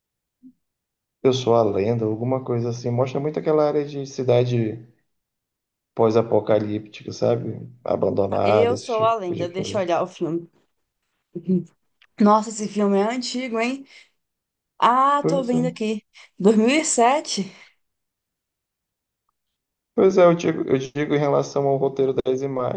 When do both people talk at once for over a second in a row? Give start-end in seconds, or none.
8.4-9.8